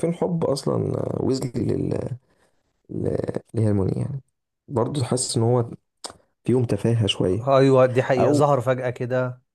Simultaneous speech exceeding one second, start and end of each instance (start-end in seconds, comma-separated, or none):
none